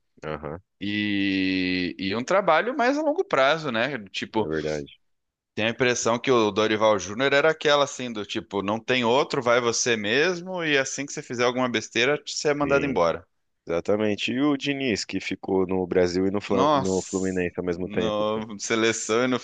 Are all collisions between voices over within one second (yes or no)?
no